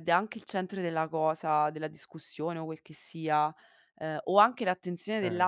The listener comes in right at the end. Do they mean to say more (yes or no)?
no